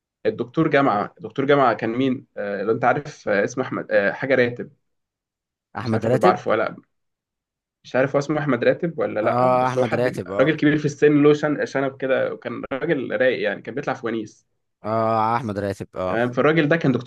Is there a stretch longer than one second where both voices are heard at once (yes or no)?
yes